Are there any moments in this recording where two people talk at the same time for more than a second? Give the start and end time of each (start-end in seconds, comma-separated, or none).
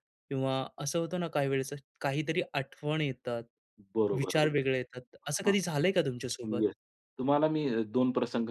4.2-5.6